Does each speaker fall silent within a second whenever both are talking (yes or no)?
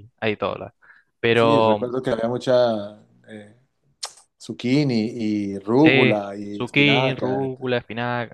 no